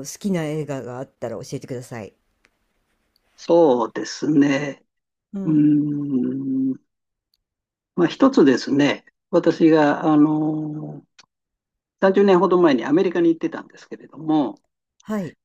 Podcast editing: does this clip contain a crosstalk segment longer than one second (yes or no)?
no